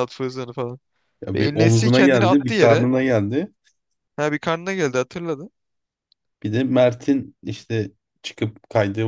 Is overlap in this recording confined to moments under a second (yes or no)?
no